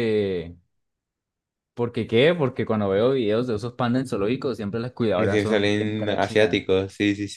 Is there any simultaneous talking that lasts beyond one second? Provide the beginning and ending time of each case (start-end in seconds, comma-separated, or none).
5.2-6.7